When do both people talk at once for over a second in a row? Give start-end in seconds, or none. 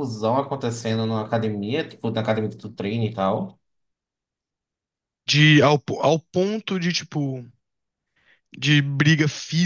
none